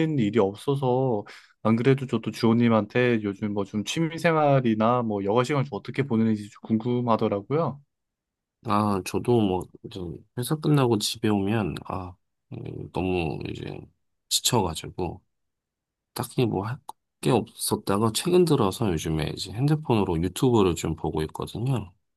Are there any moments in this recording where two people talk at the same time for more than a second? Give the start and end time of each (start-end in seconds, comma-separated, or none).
none